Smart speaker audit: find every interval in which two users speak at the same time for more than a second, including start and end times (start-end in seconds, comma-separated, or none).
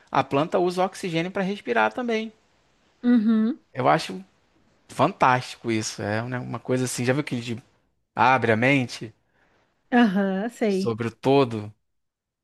none